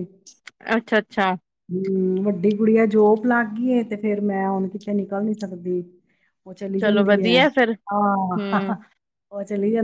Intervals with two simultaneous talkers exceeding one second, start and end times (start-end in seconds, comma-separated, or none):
none